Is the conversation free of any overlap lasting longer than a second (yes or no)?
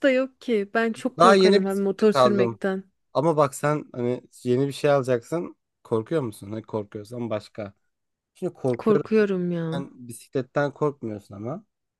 no